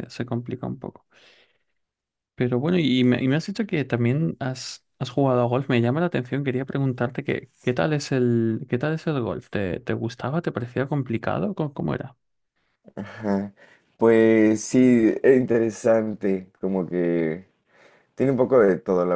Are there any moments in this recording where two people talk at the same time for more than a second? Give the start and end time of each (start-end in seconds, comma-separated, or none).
none